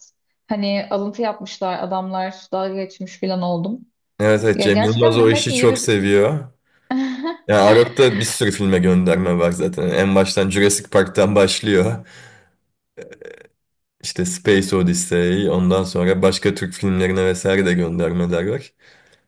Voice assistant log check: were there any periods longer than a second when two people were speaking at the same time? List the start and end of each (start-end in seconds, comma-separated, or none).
4.5-5.9